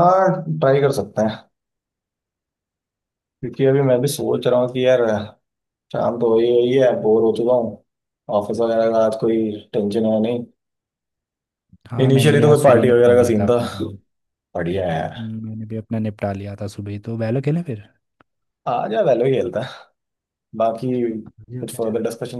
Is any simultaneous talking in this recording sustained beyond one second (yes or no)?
yes